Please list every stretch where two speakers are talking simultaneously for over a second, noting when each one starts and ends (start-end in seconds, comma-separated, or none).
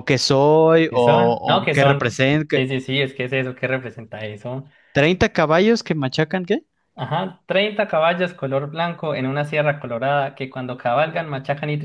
0.9-2.6